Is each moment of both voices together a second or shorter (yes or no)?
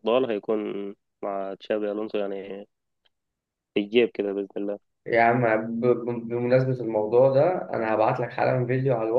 yes